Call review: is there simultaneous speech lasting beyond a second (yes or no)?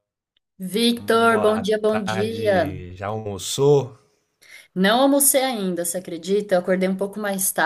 yes